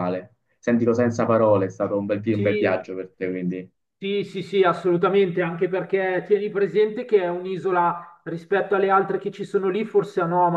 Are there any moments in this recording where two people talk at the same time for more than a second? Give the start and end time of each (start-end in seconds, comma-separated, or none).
none